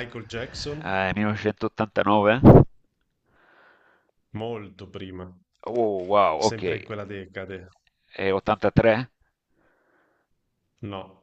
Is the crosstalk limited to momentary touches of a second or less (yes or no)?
yes